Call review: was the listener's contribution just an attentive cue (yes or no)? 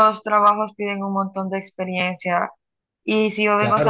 yes